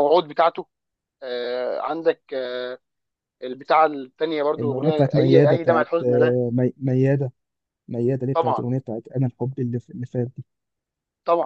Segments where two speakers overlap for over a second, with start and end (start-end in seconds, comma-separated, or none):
4.6-6.4